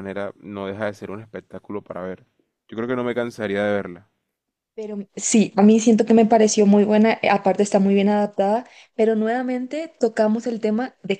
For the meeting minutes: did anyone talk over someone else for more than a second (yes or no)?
no